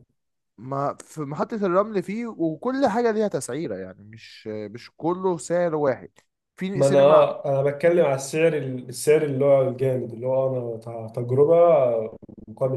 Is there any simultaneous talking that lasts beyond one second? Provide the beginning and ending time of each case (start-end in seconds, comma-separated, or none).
none